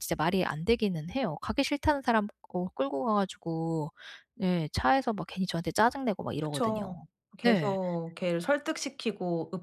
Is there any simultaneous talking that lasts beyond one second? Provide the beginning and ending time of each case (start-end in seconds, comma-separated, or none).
none